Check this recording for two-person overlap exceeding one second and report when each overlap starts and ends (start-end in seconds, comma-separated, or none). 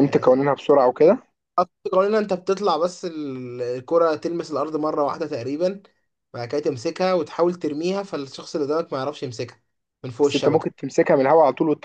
none